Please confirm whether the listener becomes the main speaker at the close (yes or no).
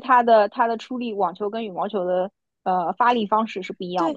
yes